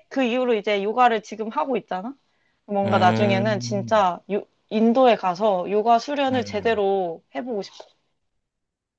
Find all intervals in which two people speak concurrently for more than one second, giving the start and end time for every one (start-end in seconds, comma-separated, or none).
2.8-4.0